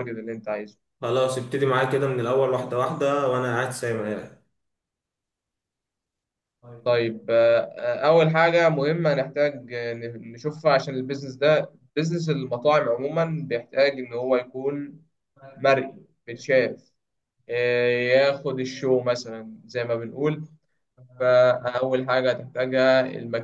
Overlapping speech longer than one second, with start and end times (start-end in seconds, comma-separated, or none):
none